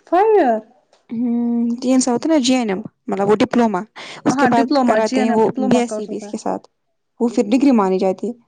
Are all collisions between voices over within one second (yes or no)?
no